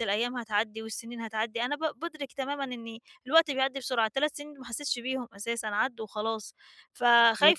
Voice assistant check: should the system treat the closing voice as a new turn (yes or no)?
no